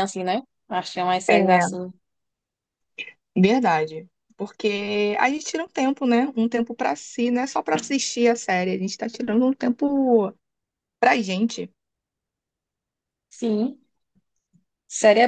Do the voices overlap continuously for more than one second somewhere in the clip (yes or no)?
no